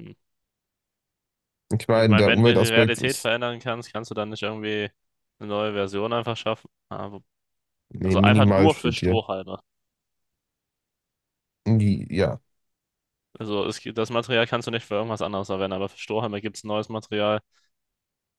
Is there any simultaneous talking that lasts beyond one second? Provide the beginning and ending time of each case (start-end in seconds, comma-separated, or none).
1.9-3.3, 8.0-9.2